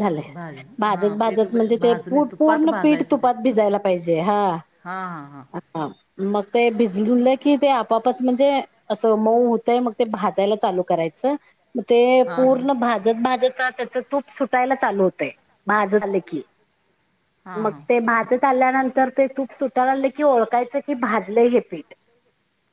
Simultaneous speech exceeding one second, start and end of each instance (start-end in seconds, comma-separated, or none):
0.9-3.3